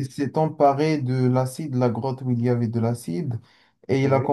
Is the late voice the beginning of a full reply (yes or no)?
no